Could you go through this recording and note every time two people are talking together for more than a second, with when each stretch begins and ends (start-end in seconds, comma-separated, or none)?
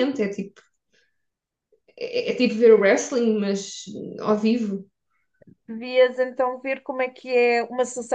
none